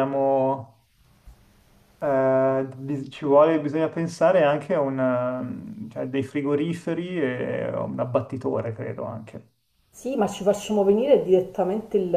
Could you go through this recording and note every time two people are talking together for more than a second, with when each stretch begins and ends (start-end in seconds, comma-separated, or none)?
none